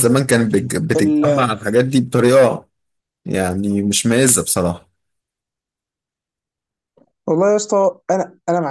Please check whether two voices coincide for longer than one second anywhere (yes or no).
no